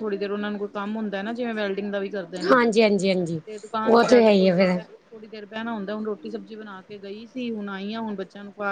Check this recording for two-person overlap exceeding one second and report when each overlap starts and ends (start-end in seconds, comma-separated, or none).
none